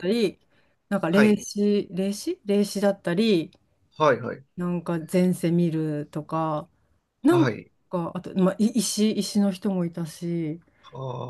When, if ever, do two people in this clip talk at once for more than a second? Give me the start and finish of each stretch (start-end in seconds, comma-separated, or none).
none